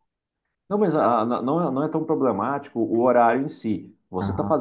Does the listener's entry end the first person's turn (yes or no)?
no